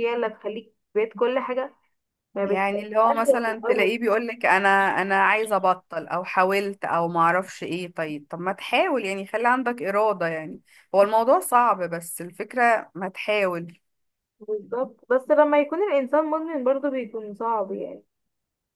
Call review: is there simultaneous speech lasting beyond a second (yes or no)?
yes